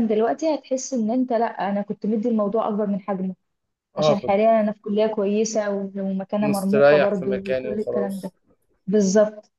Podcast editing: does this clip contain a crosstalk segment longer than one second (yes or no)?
yes